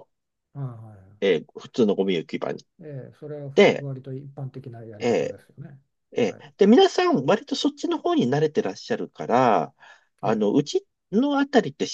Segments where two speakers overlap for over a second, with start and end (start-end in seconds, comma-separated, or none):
none